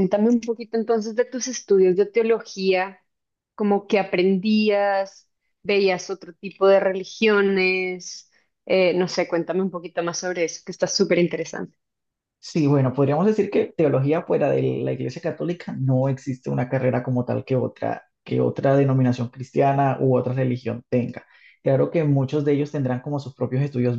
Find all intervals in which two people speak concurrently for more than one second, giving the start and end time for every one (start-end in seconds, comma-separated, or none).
none